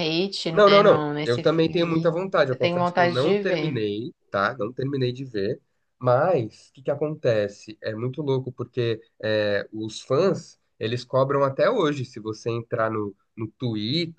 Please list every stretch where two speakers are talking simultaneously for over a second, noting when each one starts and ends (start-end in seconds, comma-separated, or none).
0.5-3.8